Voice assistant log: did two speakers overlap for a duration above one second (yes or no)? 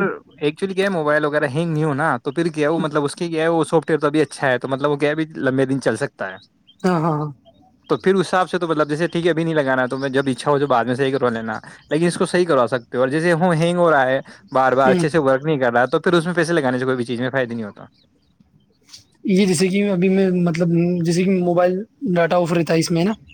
no